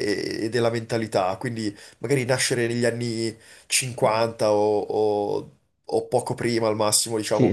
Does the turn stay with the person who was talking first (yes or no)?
no